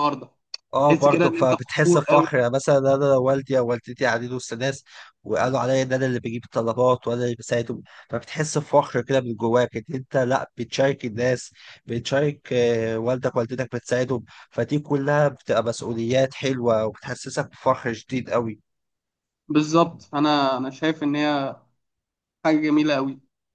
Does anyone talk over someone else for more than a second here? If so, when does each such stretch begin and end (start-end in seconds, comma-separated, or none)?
0.9-2.3